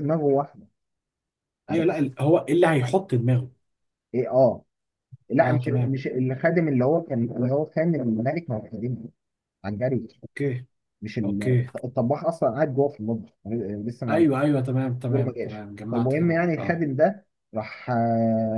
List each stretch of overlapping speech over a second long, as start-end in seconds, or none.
15.1-16.8